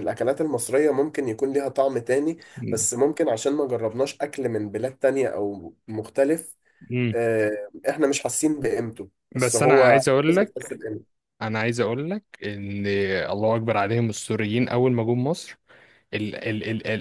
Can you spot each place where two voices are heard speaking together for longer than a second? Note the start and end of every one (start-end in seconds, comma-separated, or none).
9.3-10.8